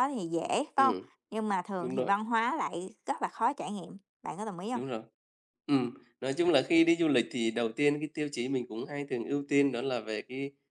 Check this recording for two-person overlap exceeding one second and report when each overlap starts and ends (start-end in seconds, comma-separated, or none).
none